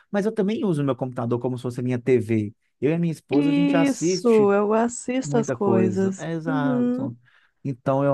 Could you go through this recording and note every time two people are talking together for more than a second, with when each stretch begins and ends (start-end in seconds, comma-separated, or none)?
3.3-4.5, 5.2-7.1